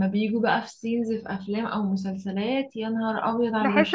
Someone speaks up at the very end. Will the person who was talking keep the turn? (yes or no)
no